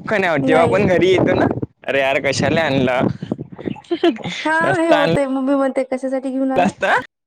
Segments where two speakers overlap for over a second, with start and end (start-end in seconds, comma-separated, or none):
none